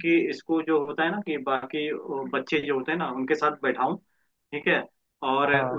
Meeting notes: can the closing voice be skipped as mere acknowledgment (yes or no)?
yes